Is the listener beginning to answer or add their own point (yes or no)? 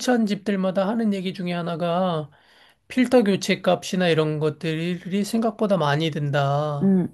yes